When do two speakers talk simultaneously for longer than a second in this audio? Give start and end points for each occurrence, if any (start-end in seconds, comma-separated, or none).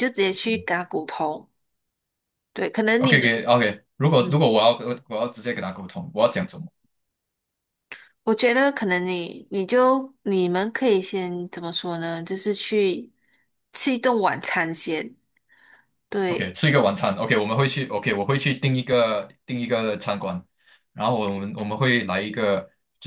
none